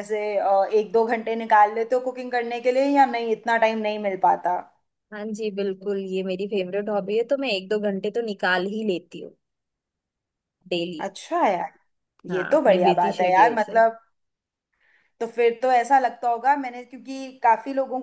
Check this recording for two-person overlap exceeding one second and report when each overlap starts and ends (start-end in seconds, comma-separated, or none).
12.3-13.8